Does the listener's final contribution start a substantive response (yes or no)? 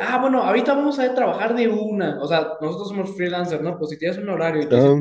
no